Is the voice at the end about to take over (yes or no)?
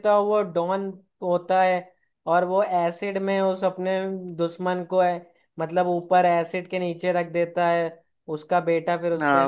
yes